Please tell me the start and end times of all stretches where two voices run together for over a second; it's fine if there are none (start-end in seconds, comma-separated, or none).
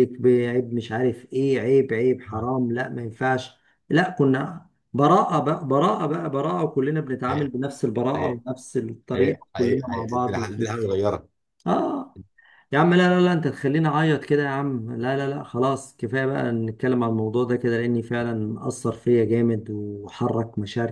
9.1-10.8